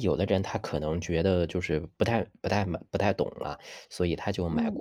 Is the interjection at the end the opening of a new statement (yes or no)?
no